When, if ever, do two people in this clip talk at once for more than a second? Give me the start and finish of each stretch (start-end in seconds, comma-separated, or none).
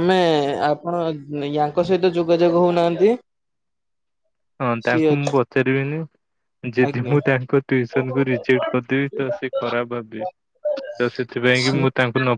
none